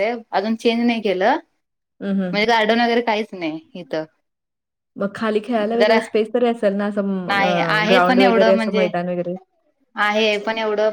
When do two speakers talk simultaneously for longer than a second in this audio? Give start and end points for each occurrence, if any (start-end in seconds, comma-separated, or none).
7.3-8.9